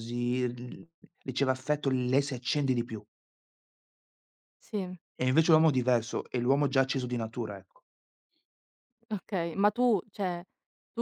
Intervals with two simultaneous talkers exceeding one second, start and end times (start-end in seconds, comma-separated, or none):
none